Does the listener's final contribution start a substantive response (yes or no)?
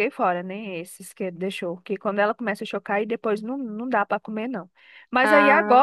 no